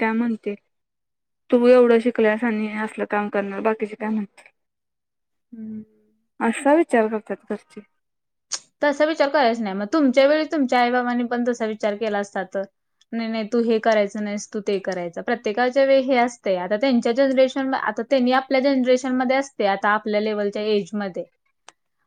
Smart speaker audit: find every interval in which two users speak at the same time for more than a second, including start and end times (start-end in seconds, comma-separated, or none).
none